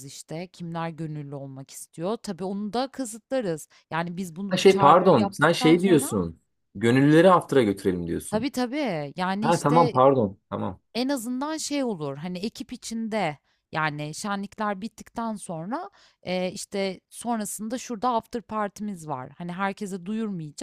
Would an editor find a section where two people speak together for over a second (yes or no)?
yes